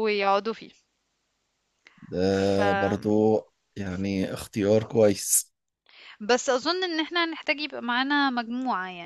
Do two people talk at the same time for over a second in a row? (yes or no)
no